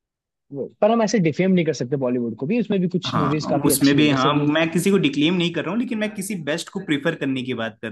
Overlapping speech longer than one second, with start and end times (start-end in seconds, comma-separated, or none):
3.1-4.5